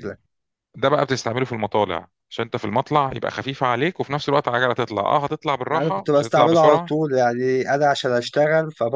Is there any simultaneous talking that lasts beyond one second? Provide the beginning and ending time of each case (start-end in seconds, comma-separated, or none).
5.7-6.9